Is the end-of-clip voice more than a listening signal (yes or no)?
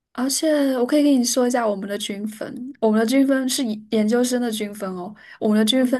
no